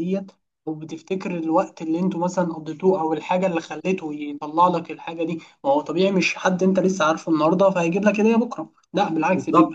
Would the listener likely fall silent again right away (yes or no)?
no